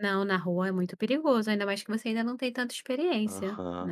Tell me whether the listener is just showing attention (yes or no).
no